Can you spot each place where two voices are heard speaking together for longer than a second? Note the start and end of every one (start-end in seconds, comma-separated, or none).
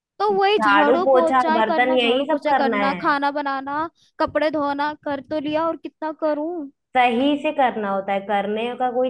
0.6-3.1